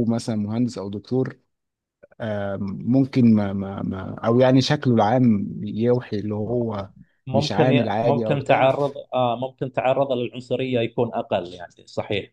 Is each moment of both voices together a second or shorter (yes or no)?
no